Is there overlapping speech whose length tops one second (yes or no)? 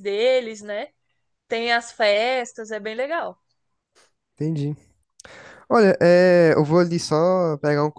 no